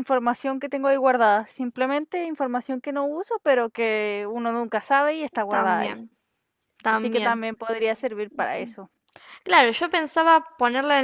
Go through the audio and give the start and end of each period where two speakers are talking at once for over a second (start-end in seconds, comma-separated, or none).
none